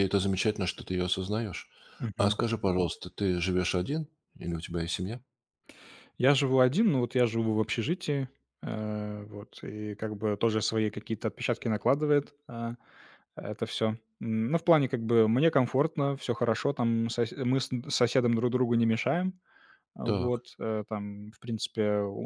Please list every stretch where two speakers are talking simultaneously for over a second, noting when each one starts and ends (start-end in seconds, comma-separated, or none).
none